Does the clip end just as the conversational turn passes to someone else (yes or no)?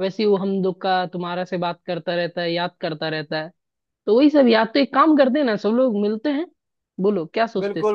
yes